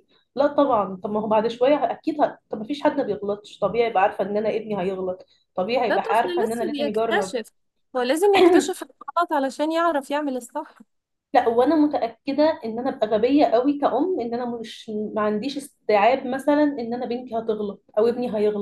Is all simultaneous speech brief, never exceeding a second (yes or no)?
no